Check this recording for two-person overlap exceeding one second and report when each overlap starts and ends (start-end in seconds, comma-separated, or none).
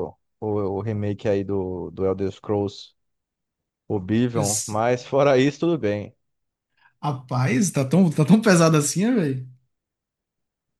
none